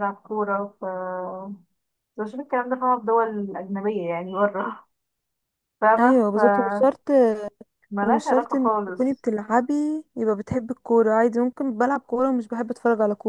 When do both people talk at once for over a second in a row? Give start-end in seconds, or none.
8.0-9.2